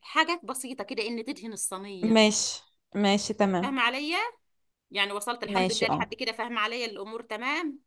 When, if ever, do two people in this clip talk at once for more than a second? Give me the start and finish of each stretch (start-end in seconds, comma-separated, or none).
none